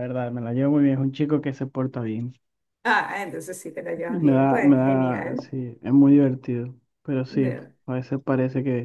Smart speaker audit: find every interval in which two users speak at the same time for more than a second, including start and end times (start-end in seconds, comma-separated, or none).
4.1-5.5